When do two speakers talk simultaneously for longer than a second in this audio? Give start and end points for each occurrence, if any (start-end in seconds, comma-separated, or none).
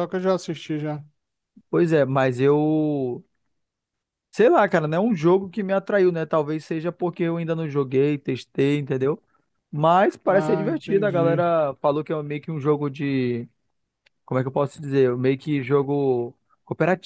10.2-11.4